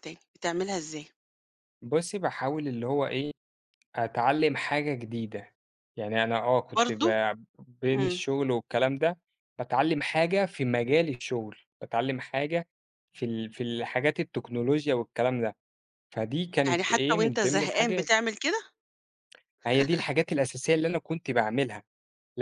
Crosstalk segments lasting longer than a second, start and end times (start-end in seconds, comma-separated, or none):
16.7-18.1